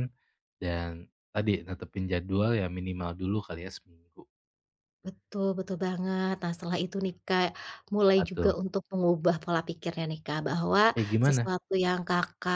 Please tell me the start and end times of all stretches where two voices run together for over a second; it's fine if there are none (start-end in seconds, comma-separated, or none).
none